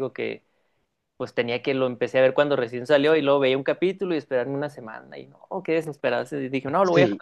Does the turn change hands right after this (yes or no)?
no